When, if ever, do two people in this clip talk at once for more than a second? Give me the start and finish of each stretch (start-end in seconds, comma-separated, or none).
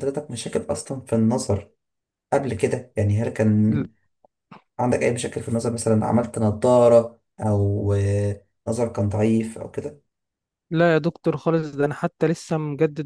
none